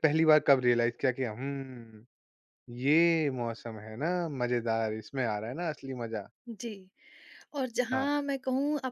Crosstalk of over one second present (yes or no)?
no